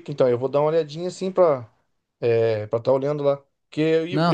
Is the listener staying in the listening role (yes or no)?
yes